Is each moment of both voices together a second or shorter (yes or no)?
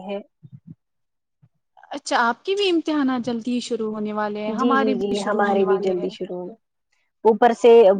no